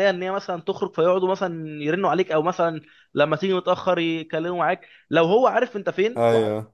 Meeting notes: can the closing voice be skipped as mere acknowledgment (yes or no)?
yes